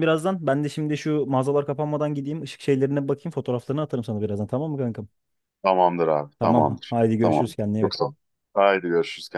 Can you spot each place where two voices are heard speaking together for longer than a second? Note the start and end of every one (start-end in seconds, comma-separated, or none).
6.4-8.0